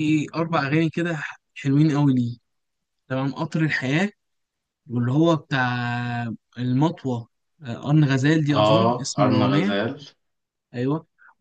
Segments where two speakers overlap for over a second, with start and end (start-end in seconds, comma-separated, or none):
8.5-9.8